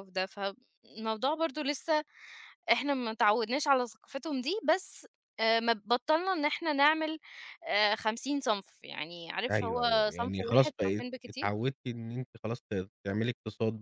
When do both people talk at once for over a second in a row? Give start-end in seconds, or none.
9.5-11.5